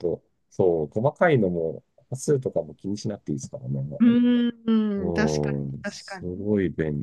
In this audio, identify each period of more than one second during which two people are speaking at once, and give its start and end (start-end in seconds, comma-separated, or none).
5.0-6.5